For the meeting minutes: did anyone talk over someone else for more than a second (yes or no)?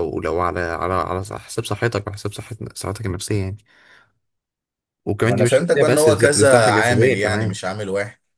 yes